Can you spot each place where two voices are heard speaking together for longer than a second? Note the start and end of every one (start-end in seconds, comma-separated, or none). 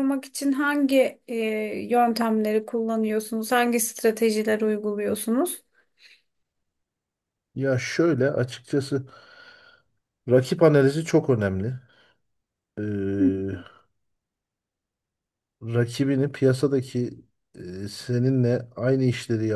none